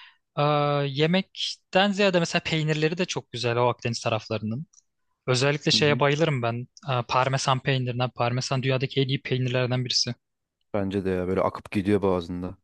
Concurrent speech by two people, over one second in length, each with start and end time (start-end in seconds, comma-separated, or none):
none